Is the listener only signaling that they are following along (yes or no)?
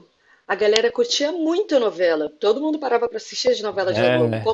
yes